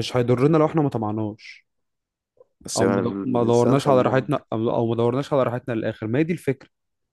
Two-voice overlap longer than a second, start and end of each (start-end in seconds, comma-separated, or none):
2.8-4.3